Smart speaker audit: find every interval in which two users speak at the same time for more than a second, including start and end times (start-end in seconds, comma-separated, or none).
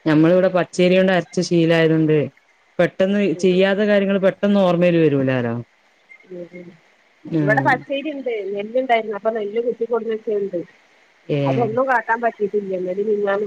none